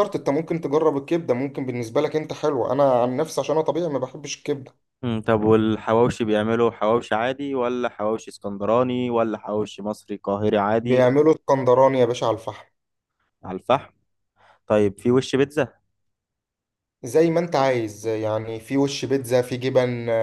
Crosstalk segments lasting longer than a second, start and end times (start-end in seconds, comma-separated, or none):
none